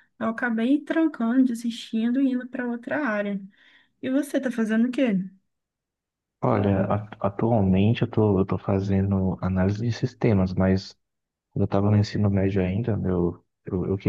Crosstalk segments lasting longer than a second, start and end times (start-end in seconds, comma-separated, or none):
none